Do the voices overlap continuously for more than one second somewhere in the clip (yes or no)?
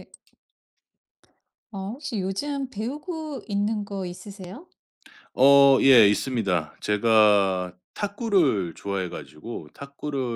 no